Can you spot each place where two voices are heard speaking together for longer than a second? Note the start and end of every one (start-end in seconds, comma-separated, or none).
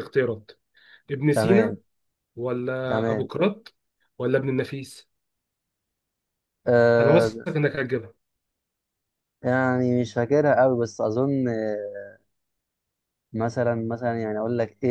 none